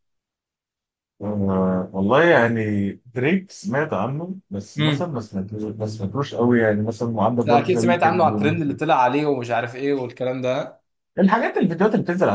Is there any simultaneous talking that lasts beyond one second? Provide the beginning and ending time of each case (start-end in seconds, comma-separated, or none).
7.4-8.8